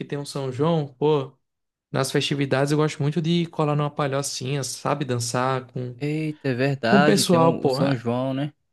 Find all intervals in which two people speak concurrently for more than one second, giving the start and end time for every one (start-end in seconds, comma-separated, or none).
6.8-8.0